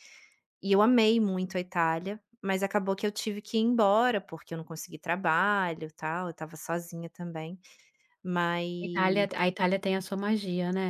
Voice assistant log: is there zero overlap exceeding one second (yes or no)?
yes